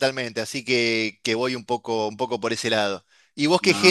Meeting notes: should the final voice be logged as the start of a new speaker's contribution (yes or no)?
no